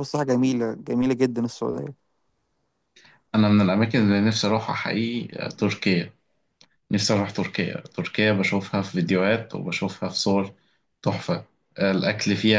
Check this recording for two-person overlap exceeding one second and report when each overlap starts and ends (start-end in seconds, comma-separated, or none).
none